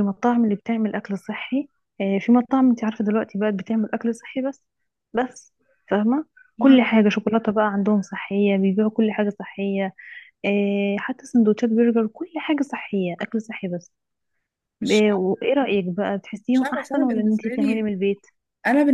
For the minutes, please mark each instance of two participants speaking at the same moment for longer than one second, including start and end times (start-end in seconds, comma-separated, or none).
16.5-17.8